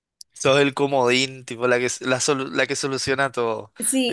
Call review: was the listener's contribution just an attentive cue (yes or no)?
no